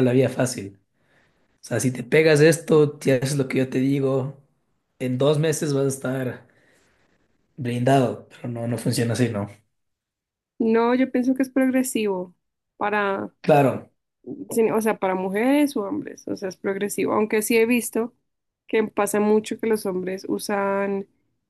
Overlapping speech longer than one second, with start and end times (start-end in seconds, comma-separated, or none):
none